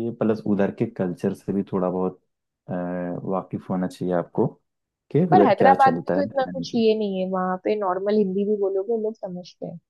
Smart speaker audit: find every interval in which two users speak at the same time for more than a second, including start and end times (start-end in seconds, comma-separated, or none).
5.3-6.8